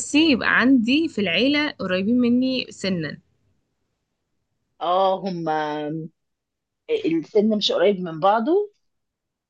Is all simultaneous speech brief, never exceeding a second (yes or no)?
yes